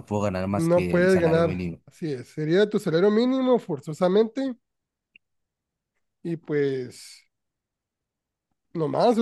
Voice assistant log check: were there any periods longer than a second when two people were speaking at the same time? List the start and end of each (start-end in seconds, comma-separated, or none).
0.5-1.8